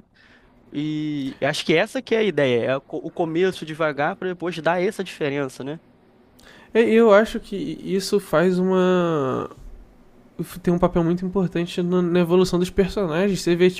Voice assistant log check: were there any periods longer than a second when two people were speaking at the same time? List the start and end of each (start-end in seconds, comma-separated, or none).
none